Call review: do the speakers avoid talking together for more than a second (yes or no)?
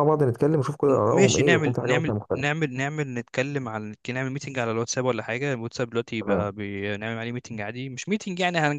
no